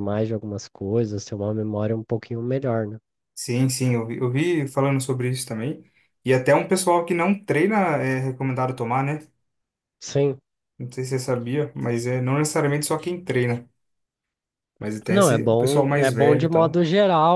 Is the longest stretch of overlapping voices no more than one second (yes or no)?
no